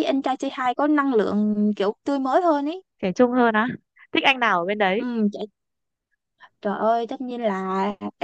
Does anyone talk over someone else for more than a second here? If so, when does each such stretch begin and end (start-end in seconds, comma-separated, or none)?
none